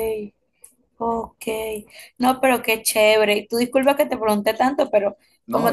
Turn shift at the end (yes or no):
no